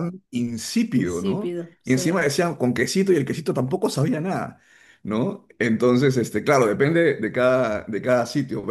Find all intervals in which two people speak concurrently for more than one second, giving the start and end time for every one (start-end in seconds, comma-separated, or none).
0.9-2.2